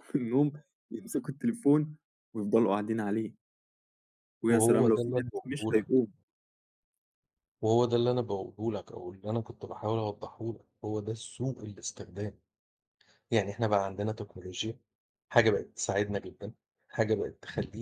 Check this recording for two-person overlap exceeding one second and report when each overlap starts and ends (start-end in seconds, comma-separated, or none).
4.5-6.0